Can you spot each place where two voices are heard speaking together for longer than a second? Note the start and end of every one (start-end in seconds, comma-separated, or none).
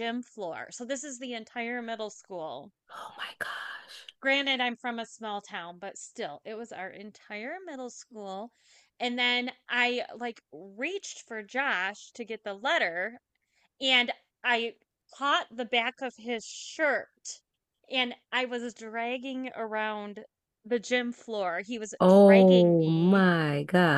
22.0-23.2